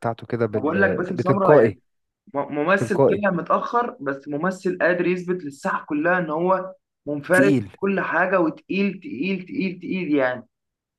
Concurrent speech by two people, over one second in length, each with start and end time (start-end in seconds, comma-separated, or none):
0.5-1.8